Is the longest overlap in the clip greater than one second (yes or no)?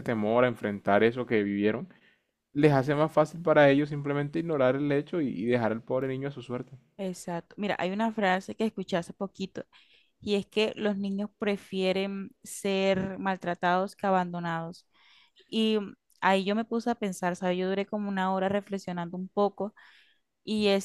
no